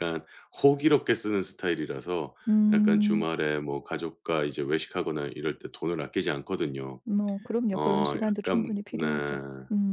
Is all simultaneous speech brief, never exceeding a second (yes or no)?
no